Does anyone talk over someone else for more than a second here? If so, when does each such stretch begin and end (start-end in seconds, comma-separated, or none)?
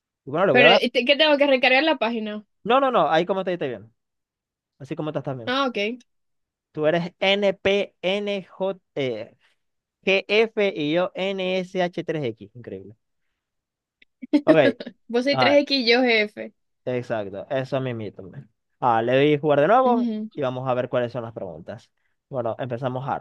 none